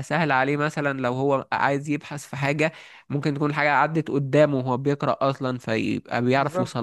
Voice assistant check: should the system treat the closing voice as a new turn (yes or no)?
no